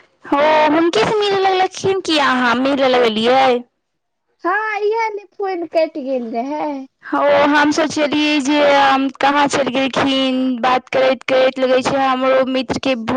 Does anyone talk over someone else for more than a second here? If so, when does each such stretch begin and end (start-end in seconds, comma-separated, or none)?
none